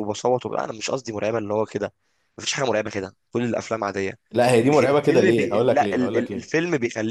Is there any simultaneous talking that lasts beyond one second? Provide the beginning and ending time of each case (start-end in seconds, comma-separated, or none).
4.7-6.5